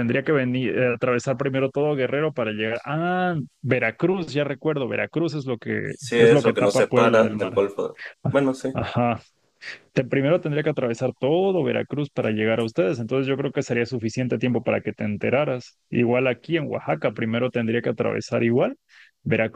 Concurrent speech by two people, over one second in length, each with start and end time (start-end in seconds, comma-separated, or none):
5.9-7.6